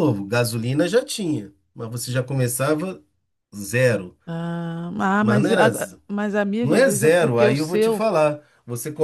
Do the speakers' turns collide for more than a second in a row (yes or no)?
yes